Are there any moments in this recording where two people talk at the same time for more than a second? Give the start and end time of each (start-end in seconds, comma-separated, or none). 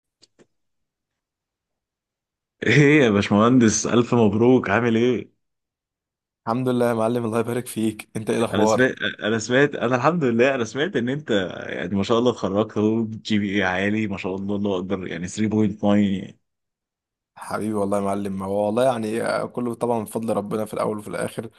none